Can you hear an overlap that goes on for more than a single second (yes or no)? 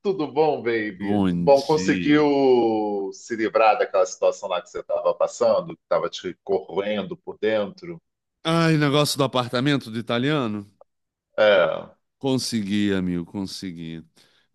yes